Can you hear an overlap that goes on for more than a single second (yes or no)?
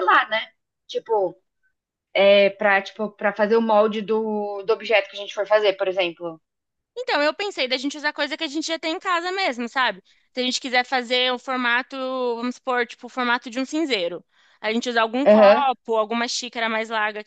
no